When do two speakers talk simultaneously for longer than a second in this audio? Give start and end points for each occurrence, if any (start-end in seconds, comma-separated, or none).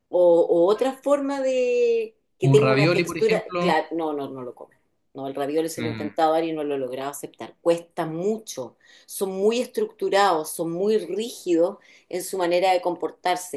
2.4-3.8